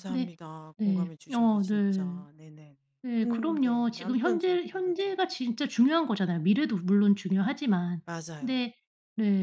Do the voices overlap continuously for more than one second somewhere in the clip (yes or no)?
yes